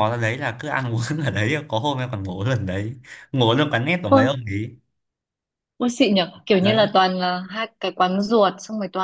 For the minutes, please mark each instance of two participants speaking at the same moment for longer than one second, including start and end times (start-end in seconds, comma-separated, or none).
none